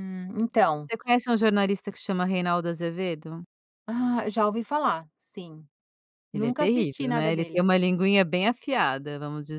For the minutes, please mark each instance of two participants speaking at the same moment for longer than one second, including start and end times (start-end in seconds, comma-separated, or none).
6.3-7.7